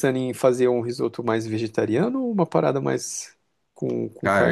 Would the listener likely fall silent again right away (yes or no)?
no